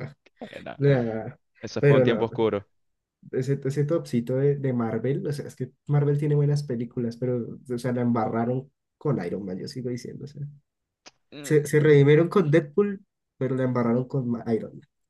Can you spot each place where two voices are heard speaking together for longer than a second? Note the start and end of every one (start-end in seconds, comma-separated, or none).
none